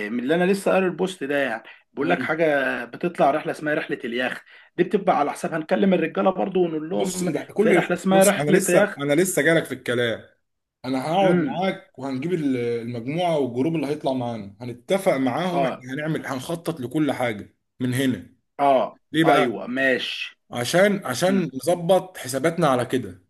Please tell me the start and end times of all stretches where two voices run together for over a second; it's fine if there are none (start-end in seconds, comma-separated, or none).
6.9-9.0